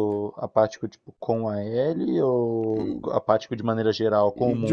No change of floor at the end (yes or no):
no